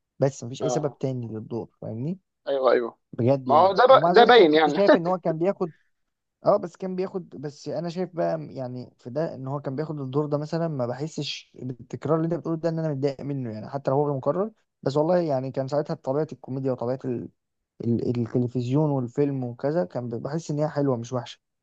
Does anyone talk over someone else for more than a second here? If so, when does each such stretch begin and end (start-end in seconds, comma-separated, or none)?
3.5-4.8